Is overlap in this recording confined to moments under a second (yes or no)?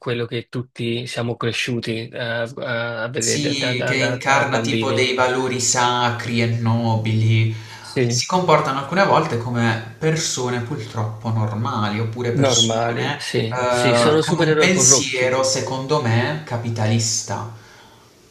no